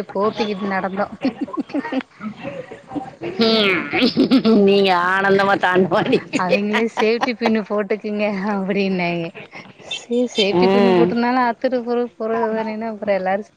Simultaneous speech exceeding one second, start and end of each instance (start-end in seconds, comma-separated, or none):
none